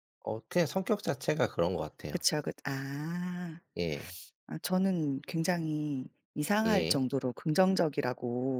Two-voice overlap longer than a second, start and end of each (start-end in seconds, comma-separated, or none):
none